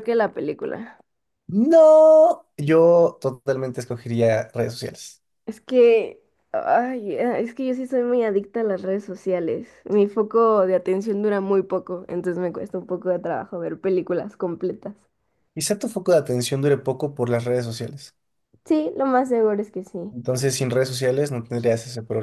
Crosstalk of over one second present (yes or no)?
no